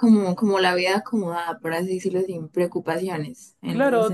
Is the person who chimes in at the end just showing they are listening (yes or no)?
no